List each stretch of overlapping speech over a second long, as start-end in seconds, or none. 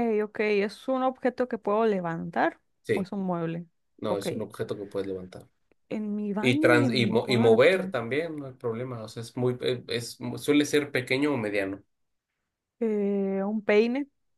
6.4-7.9